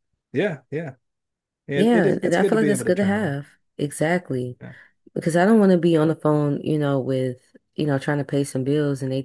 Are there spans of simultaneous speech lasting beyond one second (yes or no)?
yes